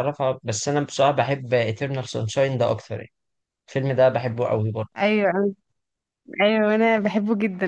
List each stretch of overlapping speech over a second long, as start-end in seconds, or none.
none